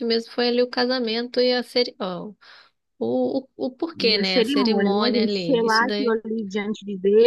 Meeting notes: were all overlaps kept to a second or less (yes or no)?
no